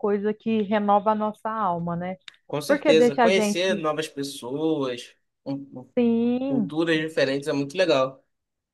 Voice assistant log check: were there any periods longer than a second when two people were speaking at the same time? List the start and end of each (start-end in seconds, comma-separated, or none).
2.7-3.9